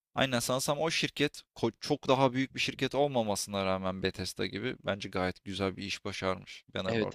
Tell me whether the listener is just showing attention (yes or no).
no